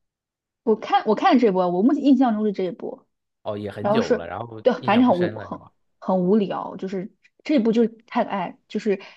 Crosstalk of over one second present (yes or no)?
yes